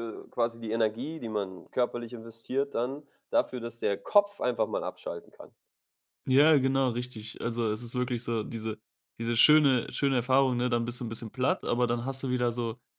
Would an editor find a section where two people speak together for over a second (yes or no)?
no